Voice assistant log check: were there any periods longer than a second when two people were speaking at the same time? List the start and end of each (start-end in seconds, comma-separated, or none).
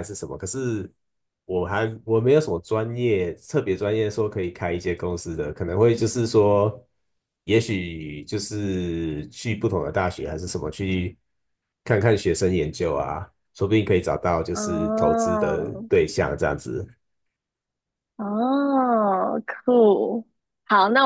14.5-15.9